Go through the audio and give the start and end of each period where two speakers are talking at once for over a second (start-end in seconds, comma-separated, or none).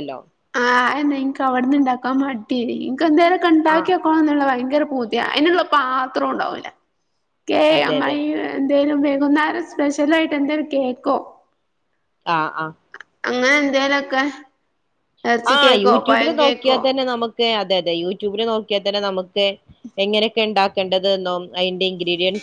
none